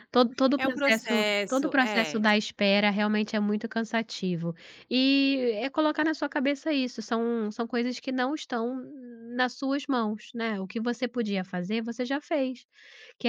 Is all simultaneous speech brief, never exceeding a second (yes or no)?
no